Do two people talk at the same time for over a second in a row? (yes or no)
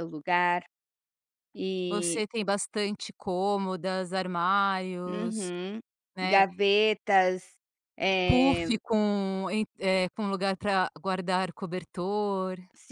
no